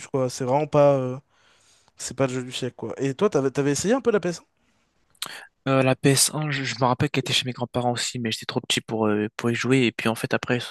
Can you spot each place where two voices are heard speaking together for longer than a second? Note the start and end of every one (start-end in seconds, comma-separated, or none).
none